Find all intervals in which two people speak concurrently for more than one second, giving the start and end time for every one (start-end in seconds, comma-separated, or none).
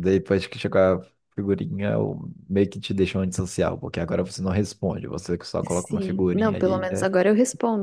5.7-7.1